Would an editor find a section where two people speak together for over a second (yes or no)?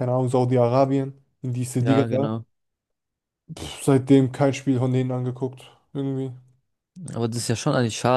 no